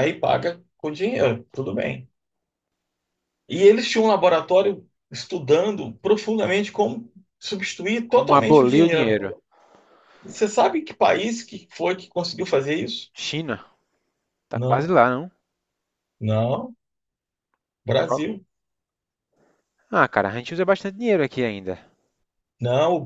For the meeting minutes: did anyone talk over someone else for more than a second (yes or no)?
yes